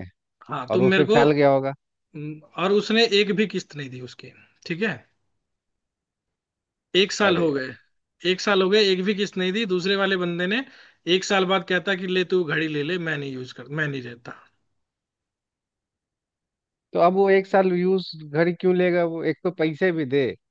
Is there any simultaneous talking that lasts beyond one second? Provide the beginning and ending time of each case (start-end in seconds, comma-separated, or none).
none